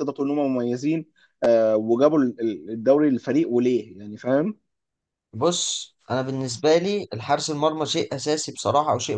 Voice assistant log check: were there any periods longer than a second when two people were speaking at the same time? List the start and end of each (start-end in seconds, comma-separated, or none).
none